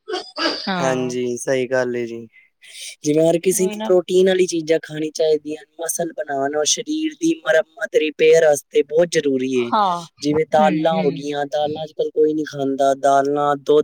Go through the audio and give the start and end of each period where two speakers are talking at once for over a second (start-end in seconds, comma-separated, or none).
none